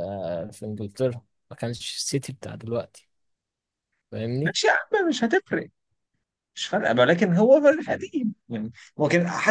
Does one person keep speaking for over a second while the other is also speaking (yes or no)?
no